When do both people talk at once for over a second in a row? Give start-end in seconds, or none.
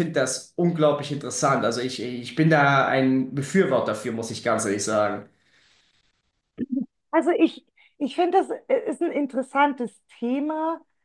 none